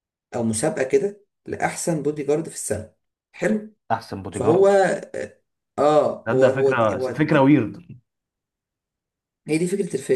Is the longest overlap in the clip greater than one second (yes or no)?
yes